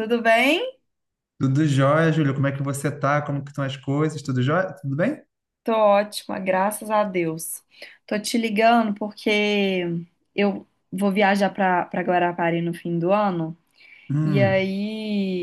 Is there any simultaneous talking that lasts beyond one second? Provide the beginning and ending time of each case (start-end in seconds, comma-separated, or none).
none